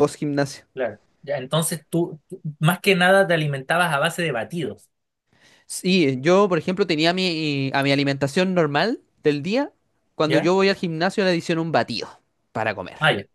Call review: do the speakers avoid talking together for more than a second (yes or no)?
yes